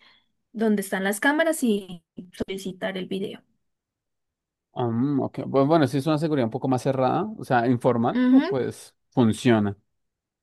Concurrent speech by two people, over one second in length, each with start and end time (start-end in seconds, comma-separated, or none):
none